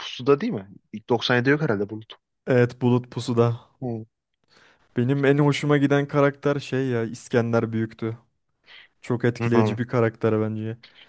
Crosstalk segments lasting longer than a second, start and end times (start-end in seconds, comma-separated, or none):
none